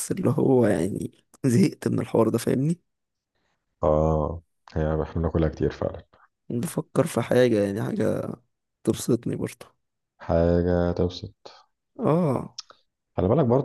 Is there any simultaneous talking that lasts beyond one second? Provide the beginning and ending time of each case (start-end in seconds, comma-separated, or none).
none